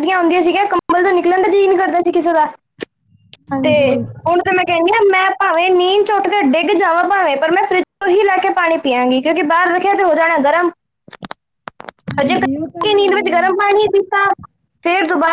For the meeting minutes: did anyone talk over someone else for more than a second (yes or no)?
yes